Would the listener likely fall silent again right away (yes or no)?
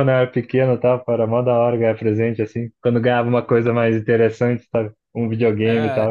no